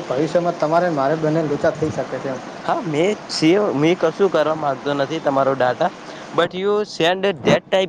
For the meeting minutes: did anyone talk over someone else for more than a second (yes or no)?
no